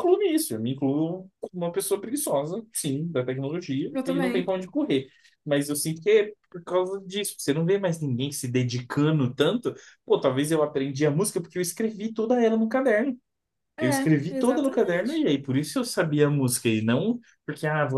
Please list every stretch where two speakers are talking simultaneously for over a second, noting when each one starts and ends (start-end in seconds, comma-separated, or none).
13.8-15.3